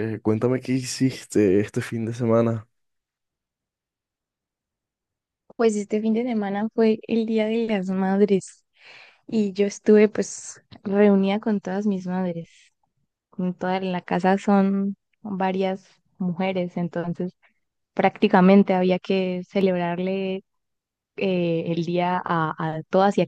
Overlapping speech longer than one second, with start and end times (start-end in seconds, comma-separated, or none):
none